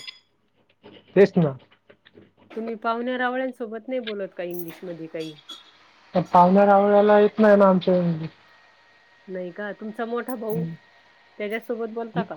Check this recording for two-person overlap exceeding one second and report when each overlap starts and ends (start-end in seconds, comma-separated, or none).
none